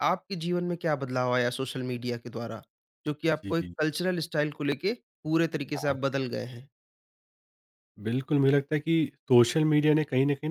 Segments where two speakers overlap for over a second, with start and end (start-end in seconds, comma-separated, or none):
none